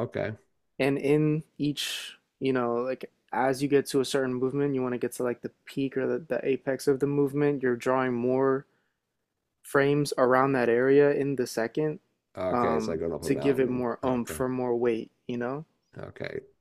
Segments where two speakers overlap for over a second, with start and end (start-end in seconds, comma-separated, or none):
12.5-14.4